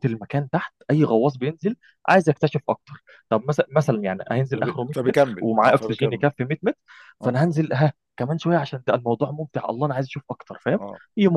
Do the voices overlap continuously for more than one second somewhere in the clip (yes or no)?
yes